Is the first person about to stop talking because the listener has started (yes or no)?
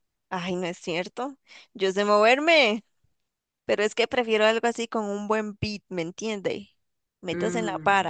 yes